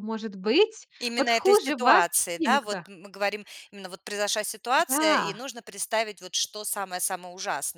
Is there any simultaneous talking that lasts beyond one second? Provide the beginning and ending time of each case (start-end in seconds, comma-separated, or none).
1.0-2.8